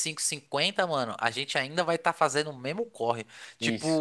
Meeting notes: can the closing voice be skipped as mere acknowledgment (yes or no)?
yes